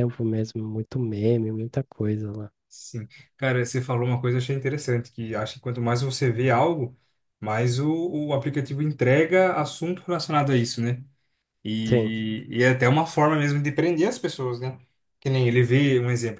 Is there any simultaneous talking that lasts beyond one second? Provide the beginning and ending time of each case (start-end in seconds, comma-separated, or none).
none